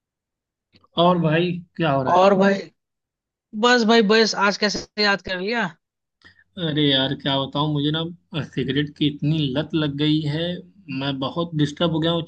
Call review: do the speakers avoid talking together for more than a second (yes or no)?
yes